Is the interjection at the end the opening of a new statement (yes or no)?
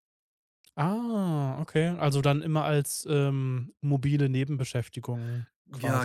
yes